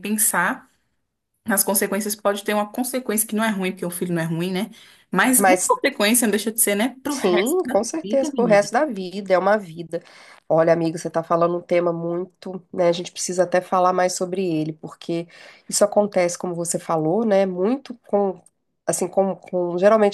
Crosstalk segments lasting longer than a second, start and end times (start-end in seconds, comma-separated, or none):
7.1-8.7